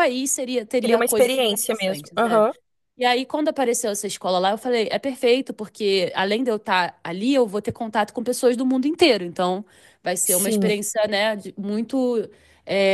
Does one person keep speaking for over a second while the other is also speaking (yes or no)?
yes